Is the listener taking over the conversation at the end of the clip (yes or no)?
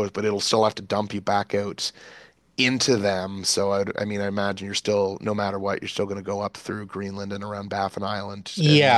yes